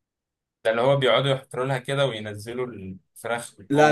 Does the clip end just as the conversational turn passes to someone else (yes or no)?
yes